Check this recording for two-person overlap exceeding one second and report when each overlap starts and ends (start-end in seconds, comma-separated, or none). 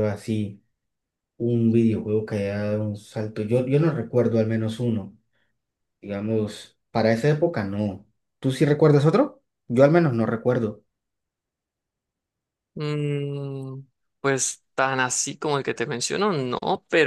none